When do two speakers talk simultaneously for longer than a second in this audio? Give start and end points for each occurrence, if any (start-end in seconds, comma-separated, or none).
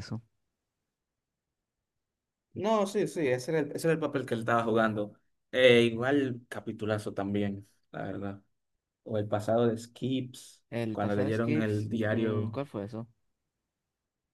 10.7-12.6